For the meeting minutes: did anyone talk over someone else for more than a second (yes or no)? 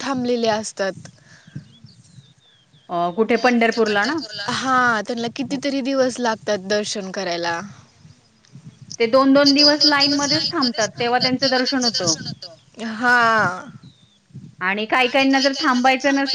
no